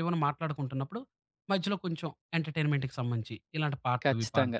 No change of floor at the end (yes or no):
no